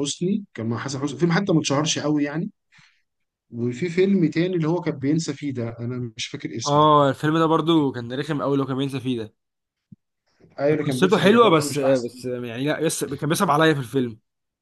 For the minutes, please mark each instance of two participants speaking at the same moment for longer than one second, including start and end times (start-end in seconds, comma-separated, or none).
10.7-12.1